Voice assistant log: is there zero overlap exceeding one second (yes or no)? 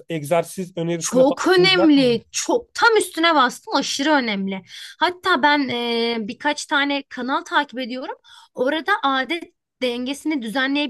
no